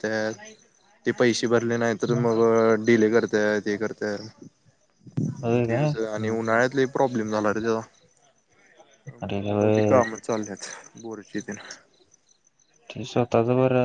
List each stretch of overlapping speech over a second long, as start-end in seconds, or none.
none